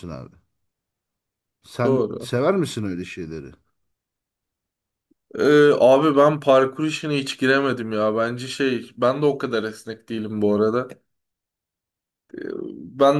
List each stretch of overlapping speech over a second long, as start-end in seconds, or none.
none